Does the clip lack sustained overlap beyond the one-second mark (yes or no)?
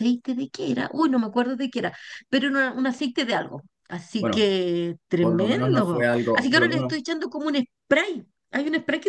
no